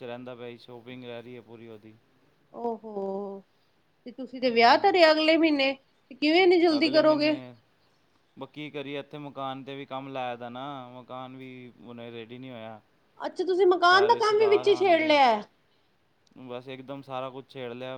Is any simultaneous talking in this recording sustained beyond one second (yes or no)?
yes